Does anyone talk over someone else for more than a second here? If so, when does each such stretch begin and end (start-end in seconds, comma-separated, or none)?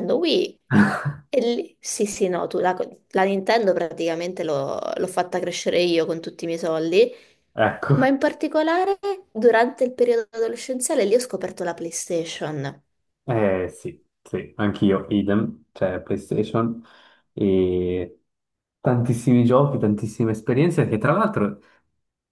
none